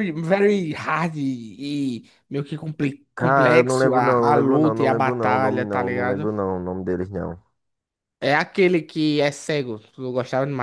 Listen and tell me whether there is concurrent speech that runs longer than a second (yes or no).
yes